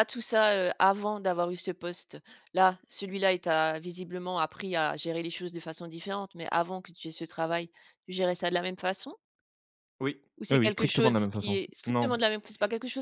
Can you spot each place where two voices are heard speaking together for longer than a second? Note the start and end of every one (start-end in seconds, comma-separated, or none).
10.4-12.1